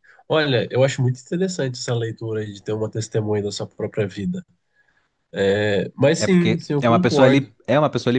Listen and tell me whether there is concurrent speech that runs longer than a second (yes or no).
yes